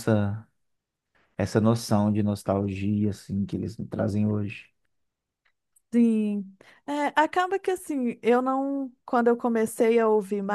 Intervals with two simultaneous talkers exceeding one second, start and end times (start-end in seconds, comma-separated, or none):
none